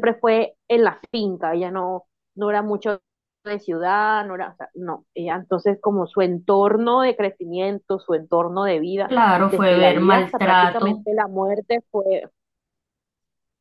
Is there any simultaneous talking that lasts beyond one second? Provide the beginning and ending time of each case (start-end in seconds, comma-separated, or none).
9.1-11.1